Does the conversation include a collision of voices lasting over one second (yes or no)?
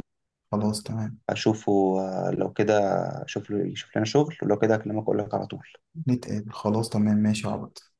no